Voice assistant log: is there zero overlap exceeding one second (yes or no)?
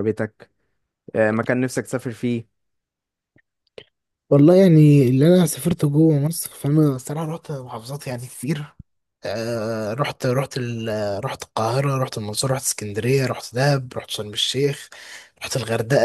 yes